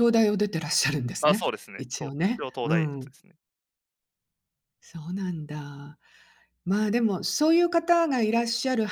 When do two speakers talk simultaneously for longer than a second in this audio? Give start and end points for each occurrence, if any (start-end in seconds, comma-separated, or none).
1.2-3.1